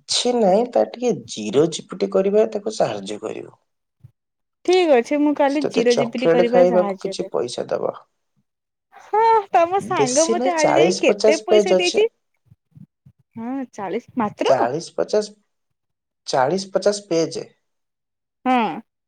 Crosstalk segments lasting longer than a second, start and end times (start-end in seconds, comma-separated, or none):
5.5-7.4, 10.0-12.0